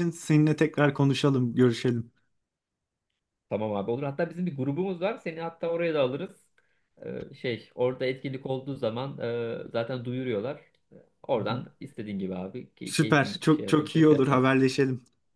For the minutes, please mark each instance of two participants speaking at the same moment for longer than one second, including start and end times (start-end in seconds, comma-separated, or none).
12.8-14.5